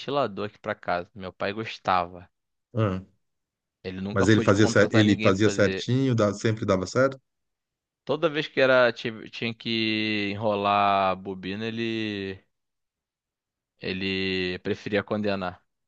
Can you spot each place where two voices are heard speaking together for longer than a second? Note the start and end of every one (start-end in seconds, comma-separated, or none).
4.1-5.9